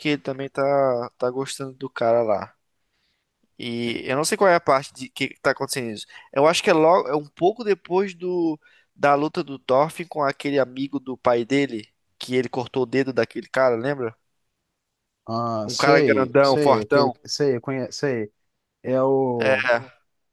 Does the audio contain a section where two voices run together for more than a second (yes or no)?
yes